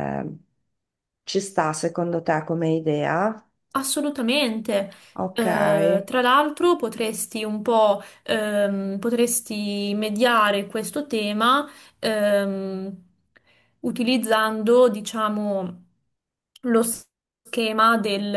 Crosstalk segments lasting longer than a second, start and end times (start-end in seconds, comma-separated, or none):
none